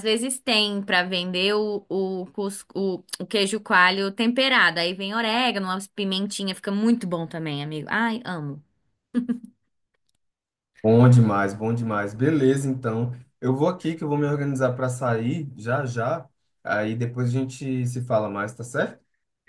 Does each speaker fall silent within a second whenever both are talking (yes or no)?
yes